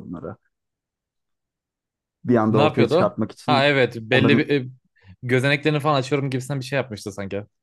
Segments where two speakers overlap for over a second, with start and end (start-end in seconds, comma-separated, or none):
2.5-4.5